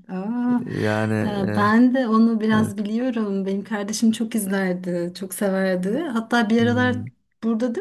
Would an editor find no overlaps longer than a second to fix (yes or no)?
yes